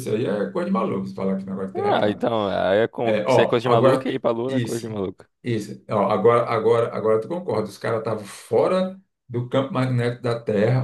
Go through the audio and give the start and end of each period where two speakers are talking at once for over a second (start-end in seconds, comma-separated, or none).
3.0-4.9